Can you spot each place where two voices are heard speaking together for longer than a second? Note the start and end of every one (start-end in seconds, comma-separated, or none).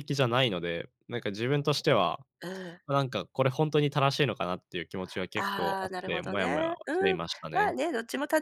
5.4-7.7